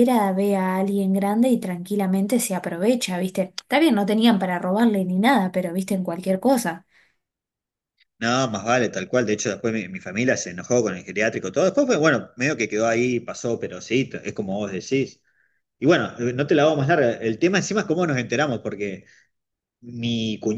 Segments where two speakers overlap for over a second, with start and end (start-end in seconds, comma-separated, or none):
none